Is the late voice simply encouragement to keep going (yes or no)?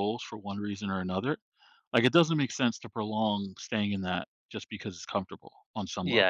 no